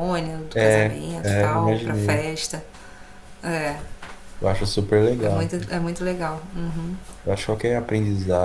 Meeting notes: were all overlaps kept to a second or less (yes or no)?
no